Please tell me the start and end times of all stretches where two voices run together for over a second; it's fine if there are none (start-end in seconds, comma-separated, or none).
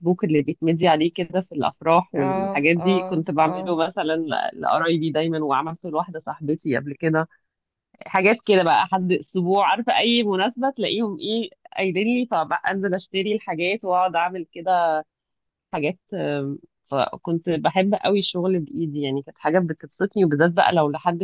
2.1-3.8